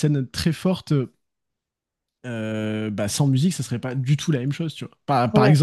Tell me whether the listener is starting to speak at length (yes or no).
no